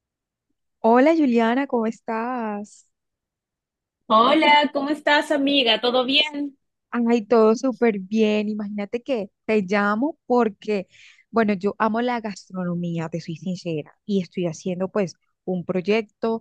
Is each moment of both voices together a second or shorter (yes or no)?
yes